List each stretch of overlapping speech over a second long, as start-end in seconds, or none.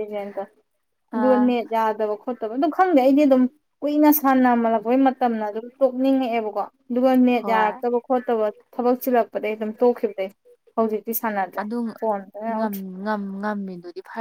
none